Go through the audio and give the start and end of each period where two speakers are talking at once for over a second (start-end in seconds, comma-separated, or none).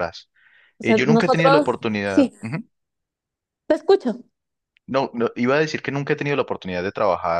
0.8-2.3